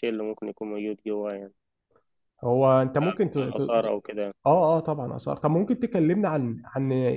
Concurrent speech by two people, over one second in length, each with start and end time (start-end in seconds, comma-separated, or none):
none